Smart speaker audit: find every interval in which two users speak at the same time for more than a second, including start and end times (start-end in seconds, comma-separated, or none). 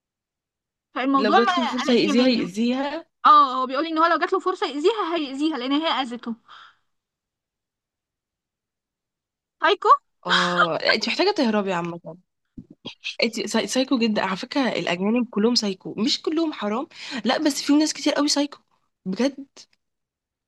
1.1-2.4